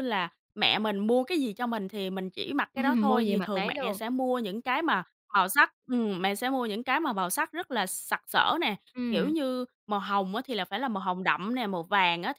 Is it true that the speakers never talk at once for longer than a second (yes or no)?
no